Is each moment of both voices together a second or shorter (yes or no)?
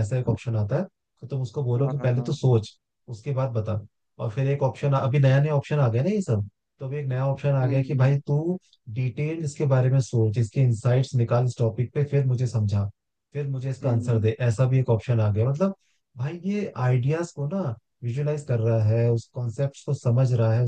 yes